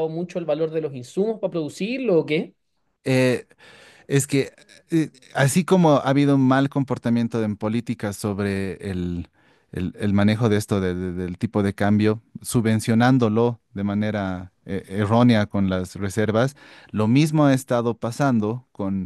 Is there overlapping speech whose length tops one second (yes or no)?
no